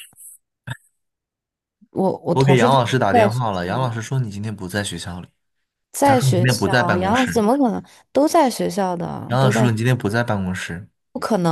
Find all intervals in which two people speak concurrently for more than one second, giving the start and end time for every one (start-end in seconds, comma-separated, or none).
2.3-3.9, 6.0-7.4